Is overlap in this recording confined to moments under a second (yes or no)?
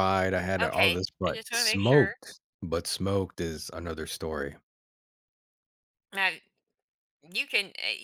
no